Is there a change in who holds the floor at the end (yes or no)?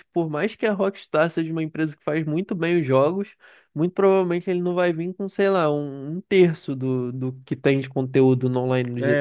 yes